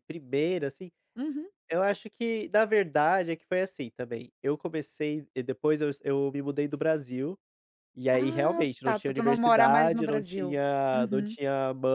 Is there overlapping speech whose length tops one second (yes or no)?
yes